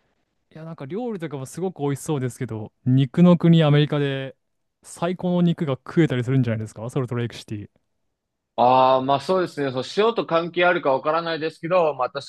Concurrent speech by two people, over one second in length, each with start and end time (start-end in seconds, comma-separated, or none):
none